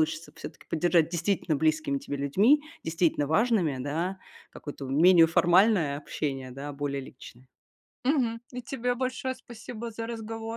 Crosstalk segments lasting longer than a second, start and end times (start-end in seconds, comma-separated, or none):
none